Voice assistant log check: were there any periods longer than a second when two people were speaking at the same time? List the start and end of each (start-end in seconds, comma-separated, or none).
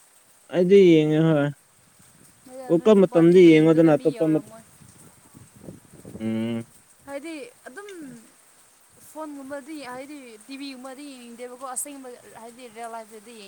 2.7-4.4